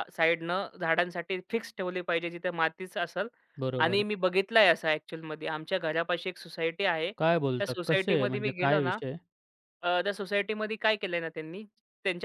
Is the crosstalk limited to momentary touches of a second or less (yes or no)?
no